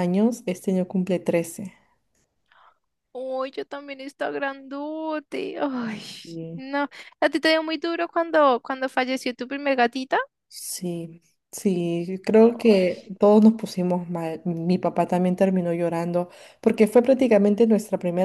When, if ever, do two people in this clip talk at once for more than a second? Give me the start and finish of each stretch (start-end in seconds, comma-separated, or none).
none